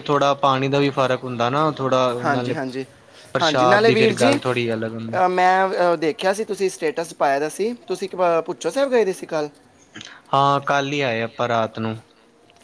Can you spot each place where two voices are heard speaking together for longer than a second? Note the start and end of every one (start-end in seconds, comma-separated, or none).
3.4-5.2